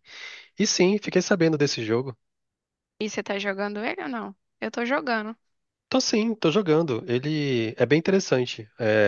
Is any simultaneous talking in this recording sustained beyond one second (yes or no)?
no